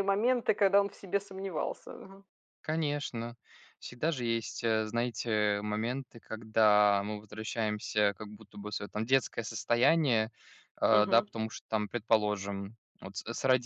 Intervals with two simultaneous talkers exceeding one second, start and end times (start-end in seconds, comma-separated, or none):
none